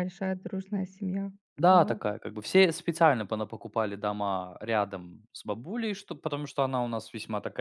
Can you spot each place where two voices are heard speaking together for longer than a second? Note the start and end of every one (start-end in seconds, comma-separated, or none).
none